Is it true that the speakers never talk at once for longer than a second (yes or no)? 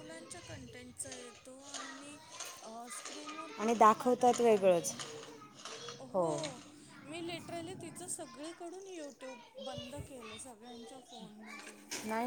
no